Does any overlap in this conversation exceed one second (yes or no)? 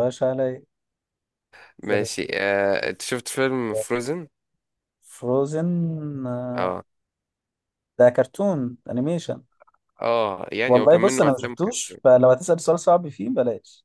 yes